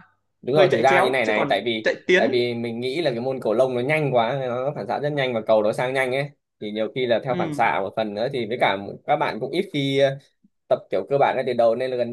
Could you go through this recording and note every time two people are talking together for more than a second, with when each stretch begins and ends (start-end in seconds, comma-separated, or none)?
0.5-2.4